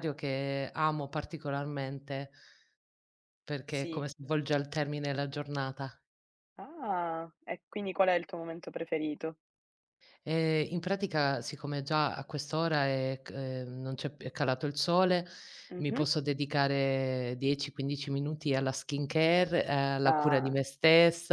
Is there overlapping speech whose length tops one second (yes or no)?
no